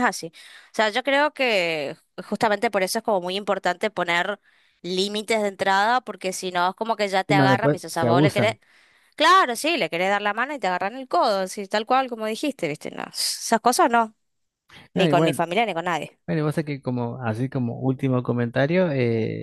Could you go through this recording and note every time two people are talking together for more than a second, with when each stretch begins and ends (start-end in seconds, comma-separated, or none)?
7.3-8.5